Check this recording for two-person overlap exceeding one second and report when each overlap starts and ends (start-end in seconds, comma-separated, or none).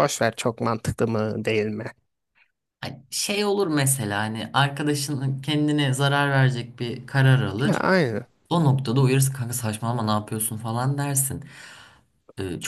none